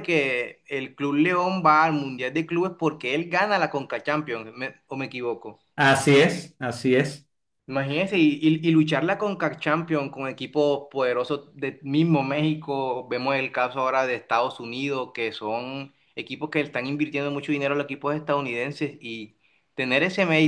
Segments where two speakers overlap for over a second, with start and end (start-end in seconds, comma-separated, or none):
none